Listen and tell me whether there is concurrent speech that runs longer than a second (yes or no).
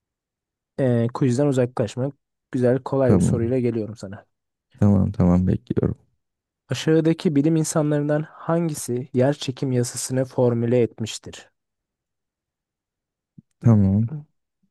no